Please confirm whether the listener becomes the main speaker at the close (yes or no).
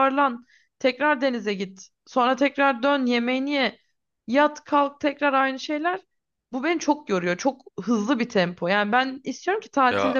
no